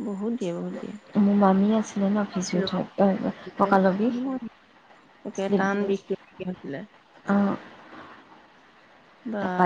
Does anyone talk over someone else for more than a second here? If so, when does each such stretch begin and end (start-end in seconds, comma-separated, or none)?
none